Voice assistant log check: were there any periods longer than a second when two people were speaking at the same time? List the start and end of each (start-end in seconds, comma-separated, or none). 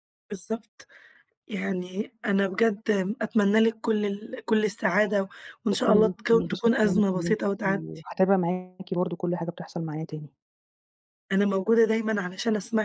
5.7-8.1